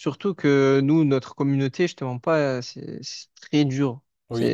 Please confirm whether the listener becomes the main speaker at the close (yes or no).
yes